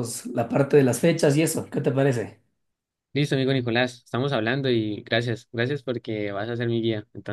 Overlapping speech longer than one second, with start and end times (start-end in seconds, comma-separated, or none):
none